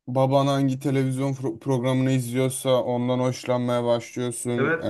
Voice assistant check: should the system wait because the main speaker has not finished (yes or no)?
no